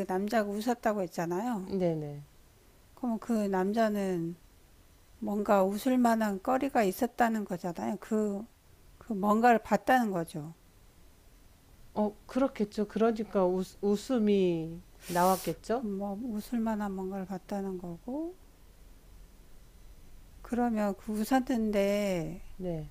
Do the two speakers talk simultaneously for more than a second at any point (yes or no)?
no